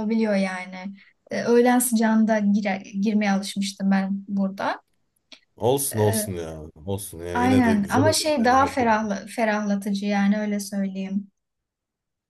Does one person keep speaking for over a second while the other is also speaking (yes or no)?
yes